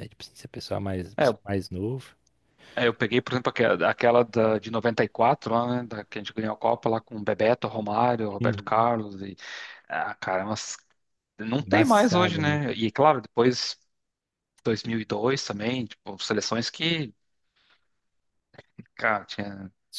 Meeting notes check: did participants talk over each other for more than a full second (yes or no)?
yes